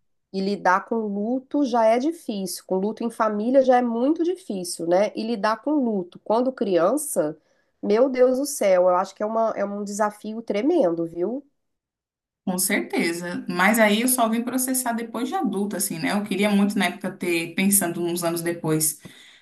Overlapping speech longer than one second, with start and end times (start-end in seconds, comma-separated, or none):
none